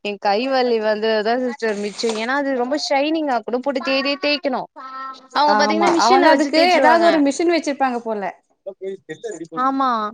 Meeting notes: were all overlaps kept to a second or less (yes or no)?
yes